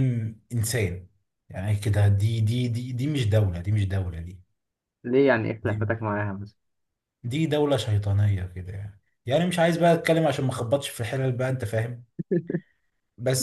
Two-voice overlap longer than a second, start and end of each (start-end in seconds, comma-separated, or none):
none